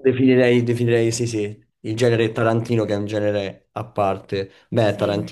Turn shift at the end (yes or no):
no